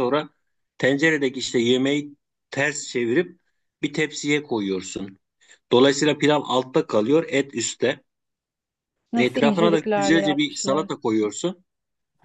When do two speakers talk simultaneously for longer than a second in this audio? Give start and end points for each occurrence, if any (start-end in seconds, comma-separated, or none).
9.2-10.9